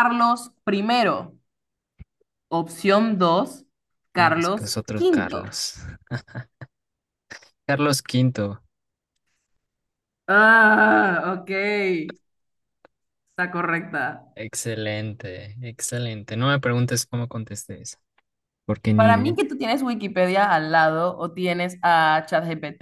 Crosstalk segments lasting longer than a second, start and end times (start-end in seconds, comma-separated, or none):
4.2-5.6